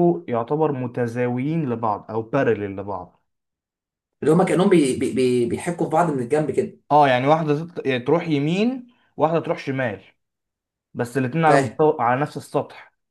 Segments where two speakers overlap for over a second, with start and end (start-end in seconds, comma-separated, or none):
none